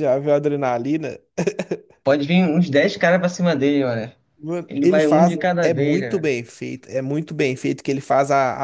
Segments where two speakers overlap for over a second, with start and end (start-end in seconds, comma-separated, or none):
4.7-6.3